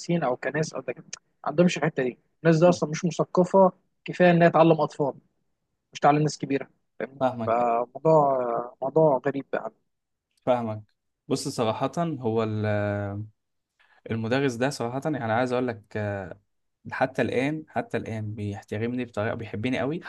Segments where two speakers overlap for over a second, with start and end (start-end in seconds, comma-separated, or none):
none